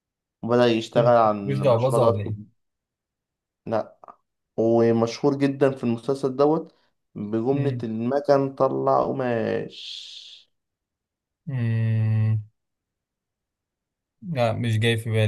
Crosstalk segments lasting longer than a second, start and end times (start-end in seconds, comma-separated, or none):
0.9-2.3